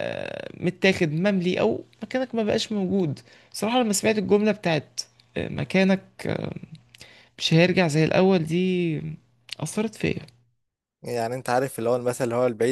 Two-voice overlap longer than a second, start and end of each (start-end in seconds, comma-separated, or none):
none